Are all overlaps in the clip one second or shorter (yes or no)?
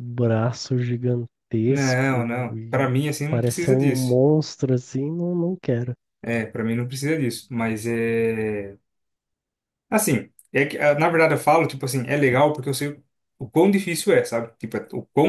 no